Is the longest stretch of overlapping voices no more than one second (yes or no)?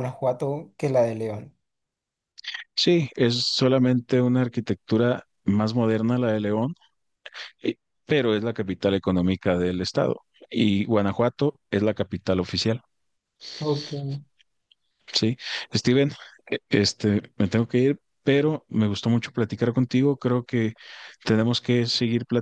yes